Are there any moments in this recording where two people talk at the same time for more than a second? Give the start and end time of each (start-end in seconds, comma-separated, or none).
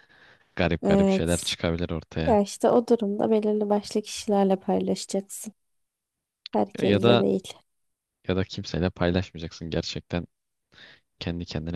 none